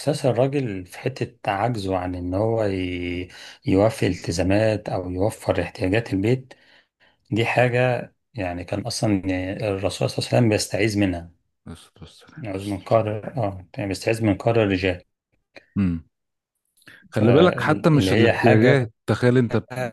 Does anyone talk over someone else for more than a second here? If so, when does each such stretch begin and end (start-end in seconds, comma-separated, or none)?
17.1-18.9